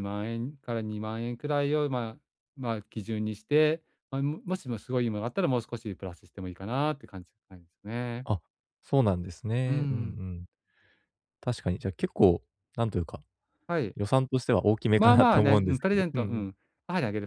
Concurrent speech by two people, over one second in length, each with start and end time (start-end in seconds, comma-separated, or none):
15.0-16.4